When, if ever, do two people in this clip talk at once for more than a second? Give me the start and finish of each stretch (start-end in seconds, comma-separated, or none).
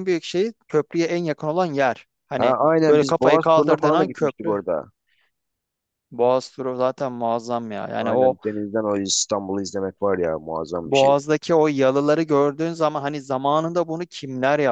2.4-4.5